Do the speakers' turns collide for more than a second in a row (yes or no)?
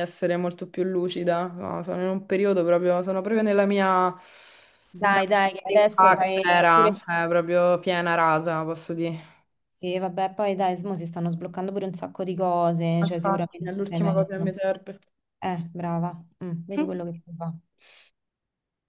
yes